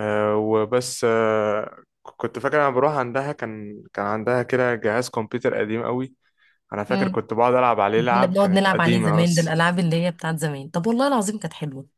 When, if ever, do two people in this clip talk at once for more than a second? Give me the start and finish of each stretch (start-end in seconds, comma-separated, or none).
8.1-9.6